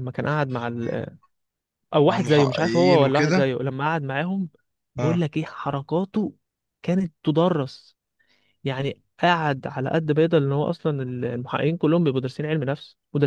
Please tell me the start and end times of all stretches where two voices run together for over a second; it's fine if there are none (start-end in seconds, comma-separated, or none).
2.1-3.5